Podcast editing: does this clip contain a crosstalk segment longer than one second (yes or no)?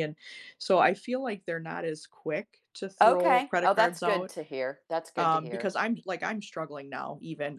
yes